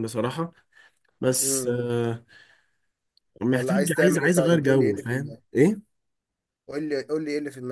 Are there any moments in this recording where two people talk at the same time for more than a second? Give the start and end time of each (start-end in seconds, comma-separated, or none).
3.5-5.4